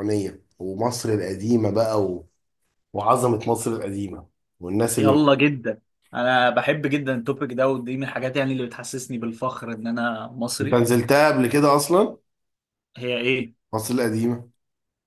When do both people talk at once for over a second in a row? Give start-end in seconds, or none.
none